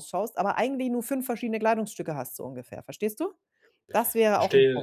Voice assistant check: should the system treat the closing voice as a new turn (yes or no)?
yes